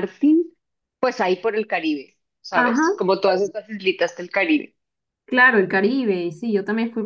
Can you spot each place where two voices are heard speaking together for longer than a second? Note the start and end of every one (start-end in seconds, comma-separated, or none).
none